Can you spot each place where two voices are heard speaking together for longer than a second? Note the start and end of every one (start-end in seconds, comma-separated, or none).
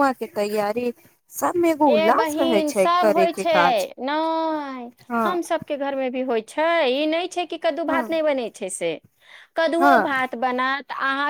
1.9-3.5